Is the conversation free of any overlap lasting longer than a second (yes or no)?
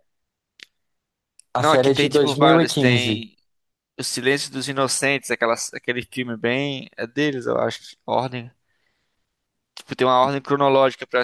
no